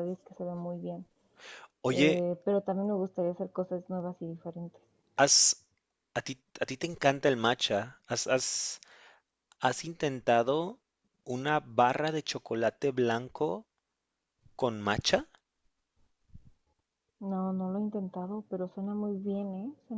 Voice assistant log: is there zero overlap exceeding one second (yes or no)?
yes